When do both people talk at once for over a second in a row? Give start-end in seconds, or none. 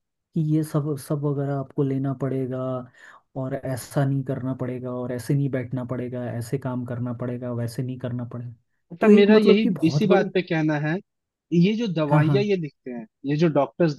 9.0-10.3